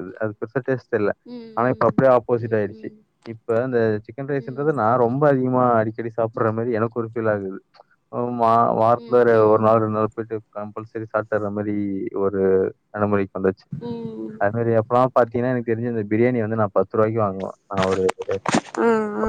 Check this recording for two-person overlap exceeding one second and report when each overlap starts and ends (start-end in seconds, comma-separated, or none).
1.6-2.9